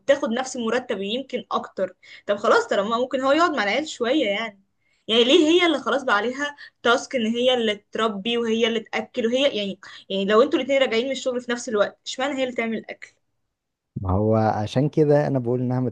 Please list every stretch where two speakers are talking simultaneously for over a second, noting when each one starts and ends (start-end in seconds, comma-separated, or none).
none